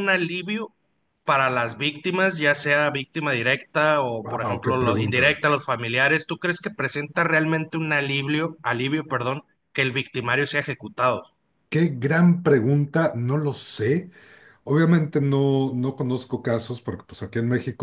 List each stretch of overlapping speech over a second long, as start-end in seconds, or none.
4.2-5.4